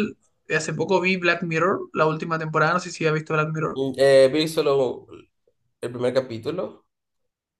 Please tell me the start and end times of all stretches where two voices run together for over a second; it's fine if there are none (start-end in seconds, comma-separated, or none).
none